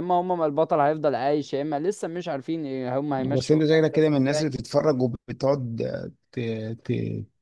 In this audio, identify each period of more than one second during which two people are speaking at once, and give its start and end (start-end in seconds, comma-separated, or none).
3.2-4.5